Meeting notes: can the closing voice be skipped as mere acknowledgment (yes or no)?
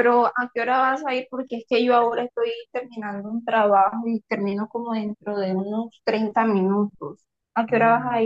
no